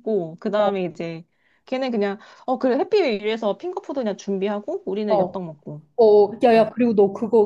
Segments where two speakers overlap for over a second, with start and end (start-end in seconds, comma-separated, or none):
none